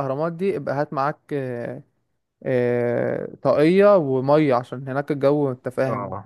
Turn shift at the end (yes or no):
yes